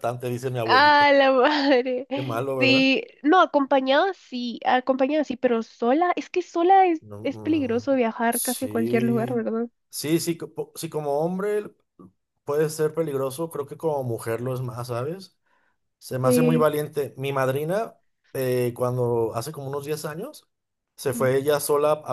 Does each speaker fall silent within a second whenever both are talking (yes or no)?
no